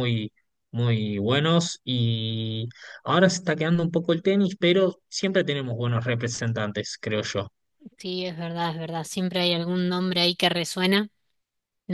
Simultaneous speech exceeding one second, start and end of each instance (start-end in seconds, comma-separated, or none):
none